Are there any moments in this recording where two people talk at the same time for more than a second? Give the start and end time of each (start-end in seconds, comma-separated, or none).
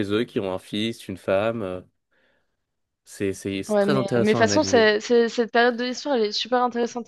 3.7-4.9